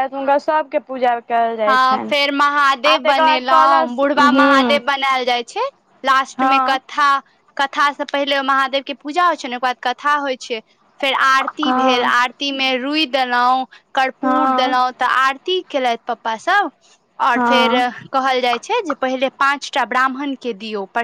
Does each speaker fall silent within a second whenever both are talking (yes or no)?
no